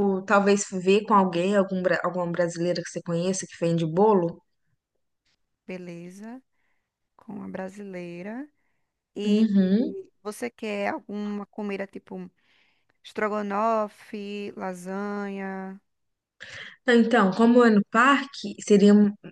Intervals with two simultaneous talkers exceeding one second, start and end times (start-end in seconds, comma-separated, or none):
none